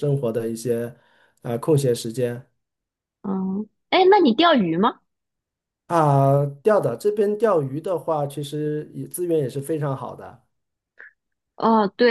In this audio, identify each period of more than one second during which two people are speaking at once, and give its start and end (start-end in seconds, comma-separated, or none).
none